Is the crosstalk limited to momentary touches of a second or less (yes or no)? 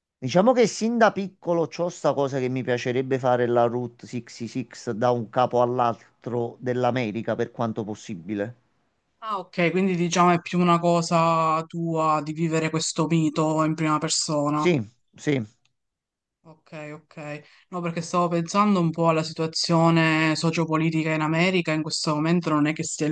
yes